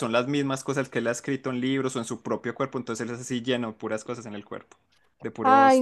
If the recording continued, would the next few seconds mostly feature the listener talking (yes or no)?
yes